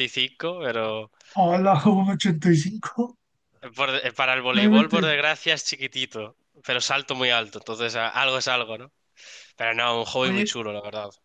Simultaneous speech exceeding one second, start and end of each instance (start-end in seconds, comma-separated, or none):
none